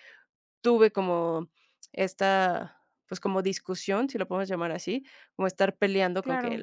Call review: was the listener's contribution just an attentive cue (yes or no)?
yes